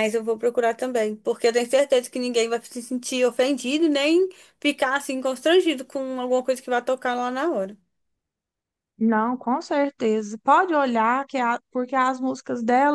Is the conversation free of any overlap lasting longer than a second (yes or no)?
yes